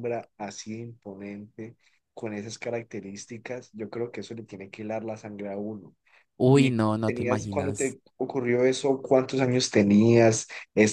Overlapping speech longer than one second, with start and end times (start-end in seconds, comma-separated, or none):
6.5-8.0